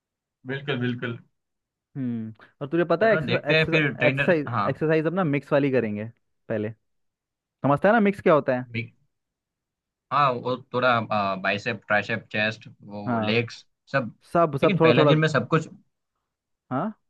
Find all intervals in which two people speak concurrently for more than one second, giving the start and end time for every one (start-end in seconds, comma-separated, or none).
3.0-4.7